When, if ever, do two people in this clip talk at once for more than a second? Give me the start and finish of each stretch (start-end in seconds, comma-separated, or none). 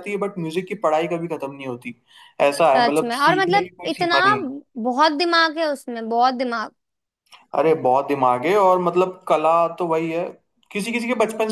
2.8-4.2